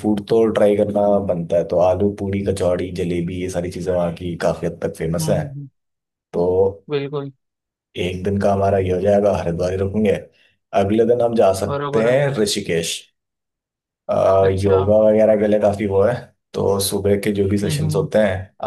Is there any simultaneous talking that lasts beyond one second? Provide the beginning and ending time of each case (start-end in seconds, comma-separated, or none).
none